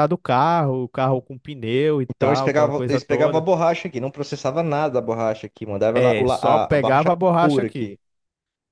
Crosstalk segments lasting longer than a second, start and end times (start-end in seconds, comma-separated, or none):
2.1-3.5, 5.9-8.0